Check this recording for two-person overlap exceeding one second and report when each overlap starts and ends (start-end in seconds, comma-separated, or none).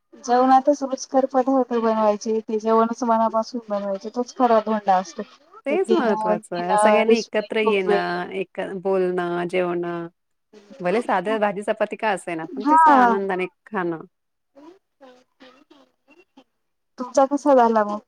5.7-8.2